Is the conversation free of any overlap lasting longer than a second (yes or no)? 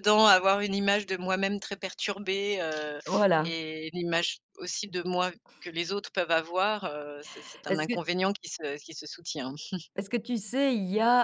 yes